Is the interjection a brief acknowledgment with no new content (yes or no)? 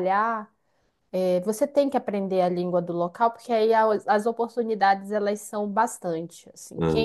yes